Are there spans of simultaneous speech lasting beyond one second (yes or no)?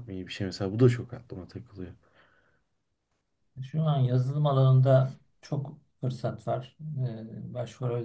no